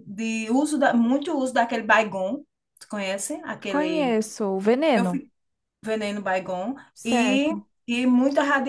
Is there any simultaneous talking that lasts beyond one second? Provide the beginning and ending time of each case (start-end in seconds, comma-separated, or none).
none